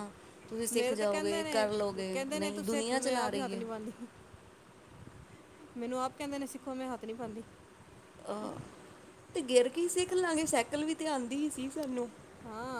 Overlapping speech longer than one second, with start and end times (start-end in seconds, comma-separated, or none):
0.8-3.6